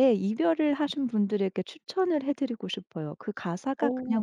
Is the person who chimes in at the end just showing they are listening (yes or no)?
yes